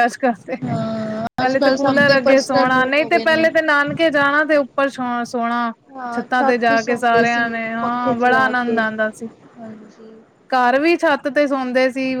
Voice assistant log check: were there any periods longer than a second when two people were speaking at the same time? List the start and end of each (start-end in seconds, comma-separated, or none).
1.4-3.5, 6.2-8.8